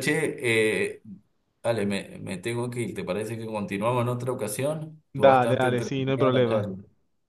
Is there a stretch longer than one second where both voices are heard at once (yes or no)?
yes